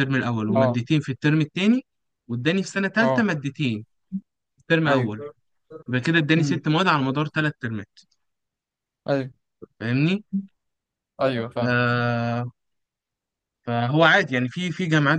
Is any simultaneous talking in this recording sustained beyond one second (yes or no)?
no